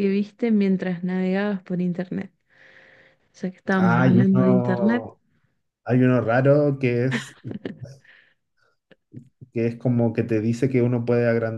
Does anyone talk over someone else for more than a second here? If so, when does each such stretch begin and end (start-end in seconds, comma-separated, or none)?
3.8-5.1